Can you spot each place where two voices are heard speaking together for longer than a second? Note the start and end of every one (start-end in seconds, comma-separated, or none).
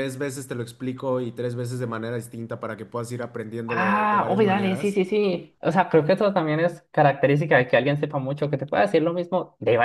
3.7-5.0